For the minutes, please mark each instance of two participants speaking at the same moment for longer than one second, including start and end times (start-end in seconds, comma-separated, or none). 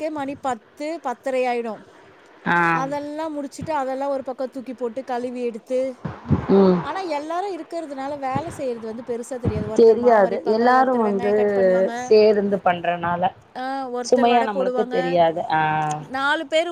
9.8-11.3